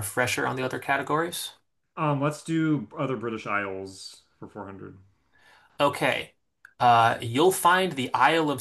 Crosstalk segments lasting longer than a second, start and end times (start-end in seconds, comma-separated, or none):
none